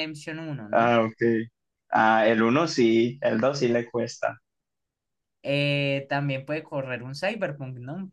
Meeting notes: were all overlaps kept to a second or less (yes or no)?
yes